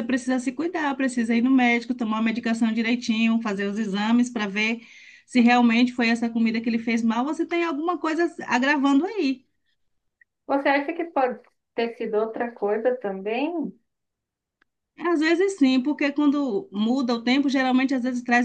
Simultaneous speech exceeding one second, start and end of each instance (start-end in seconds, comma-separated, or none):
none